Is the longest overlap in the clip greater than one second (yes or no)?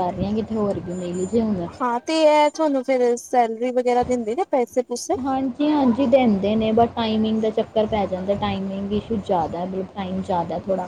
no